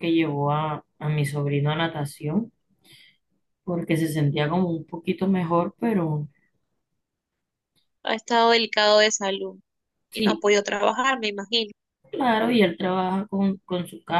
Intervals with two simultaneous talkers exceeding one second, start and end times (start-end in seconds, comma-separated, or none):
none